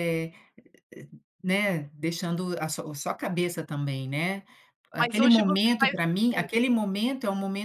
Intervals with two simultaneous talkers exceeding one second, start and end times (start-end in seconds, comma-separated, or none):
5.0-6.5